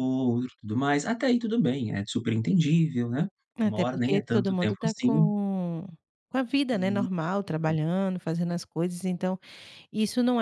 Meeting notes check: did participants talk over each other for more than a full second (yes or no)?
yes